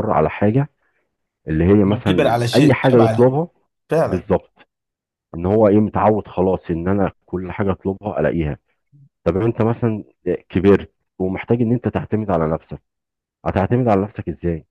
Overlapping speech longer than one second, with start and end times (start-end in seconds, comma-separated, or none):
1.8-3.4